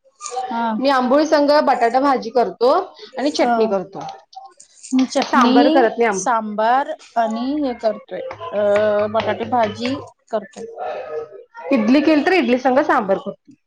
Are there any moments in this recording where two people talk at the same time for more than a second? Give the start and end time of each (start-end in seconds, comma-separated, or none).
none